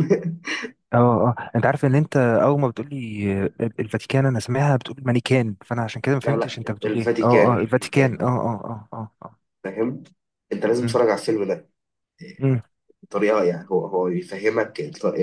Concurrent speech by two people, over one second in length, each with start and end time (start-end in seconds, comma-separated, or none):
6.2-8.3